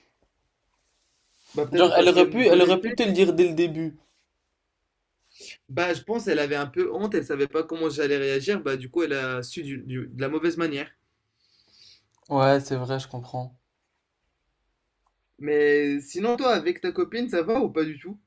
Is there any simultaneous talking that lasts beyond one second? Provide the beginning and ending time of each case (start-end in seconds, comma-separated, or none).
1.7-3.0